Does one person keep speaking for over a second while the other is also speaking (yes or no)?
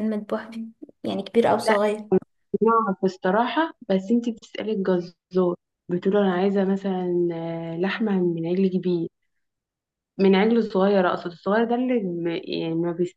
no